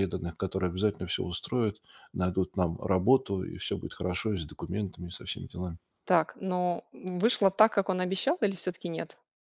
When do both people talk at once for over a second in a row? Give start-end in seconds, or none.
none